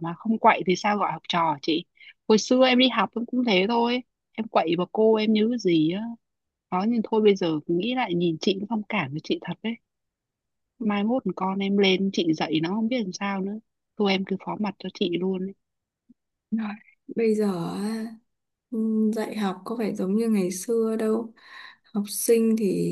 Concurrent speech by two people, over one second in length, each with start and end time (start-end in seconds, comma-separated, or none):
none